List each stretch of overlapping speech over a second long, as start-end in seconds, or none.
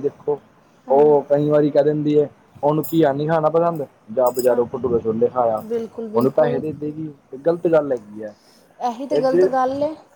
none